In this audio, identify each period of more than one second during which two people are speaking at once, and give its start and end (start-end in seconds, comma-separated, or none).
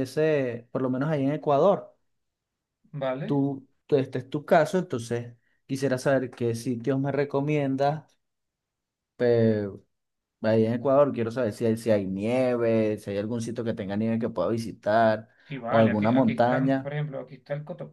15.7-16.9